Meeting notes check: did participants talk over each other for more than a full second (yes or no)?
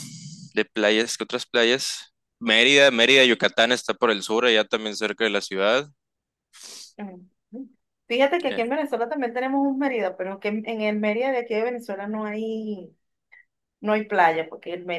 no